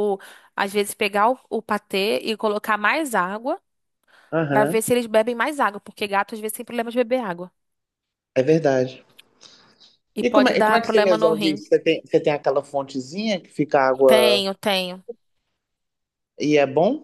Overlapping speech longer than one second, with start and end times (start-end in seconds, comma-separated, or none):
10.2-11.6